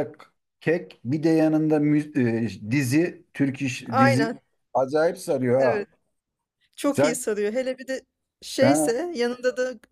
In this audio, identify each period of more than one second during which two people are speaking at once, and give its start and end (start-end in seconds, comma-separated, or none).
none